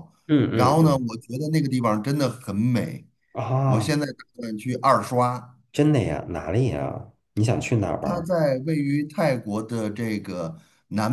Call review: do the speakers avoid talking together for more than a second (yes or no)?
yes